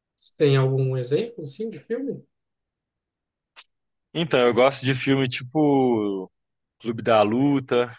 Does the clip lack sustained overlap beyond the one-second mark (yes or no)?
yes